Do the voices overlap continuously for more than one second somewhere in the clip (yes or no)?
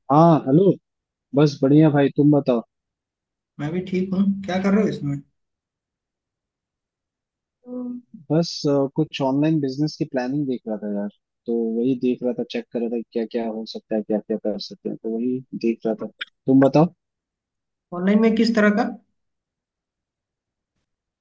no